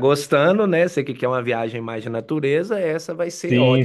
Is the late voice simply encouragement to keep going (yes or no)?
no